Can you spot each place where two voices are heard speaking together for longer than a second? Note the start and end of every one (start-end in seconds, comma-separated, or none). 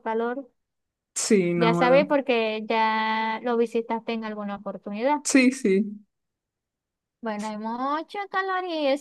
none